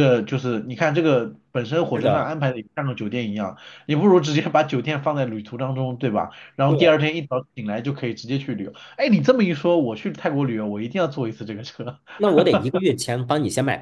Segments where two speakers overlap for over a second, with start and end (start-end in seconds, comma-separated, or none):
none